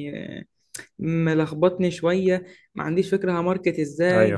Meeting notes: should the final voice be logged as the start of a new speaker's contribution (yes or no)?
no